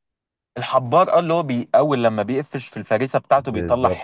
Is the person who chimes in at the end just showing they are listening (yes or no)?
no